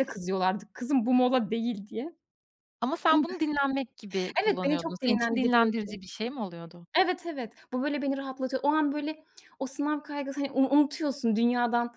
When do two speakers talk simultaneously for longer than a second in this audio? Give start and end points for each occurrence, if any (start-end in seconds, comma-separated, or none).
4.4-5.9